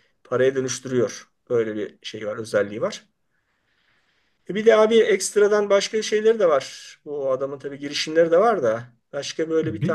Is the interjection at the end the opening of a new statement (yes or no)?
yes